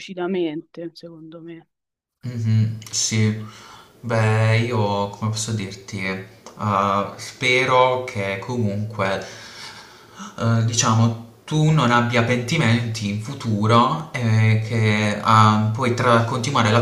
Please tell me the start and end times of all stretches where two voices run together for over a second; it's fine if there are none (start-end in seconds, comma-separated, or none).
none